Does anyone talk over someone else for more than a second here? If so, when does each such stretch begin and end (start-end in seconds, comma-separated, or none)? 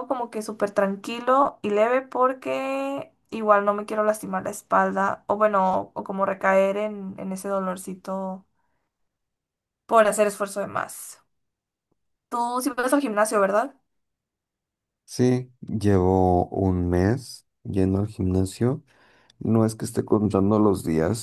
none